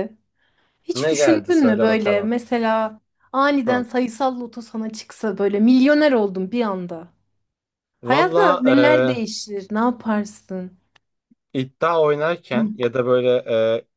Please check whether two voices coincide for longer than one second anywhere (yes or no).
yes